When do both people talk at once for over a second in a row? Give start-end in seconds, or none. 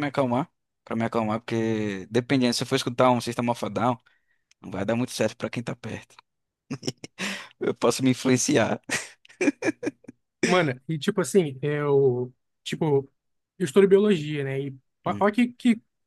none